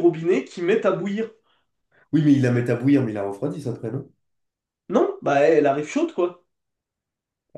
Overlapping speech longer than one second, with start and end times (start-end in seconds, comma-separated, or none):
none